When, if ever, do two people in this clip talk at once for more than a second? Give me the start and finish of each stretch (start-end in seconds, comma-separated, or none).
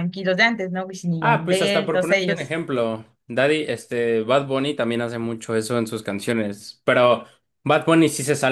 1.2-2.5